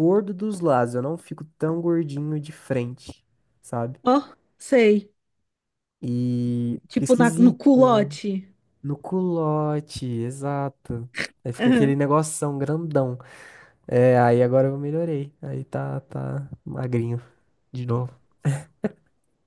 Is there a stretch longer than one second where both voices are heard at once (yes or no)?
yes